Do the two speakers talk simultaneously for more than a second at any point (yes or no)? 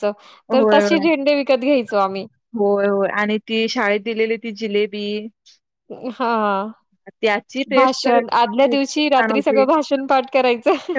yes